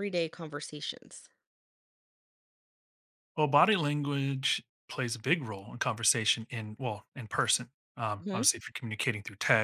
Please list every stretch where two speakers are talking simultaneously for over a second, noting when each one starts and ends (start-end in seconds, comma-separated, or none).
none